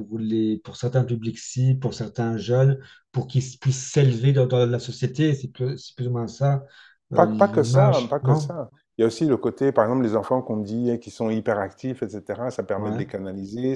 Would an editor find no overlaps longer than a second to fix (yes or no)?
no